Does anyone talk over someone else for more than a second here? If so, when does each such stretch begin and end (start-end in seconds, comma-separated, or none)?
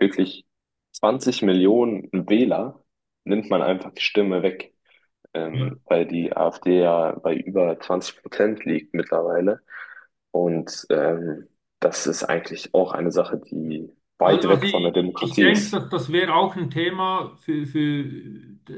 14.2-15.8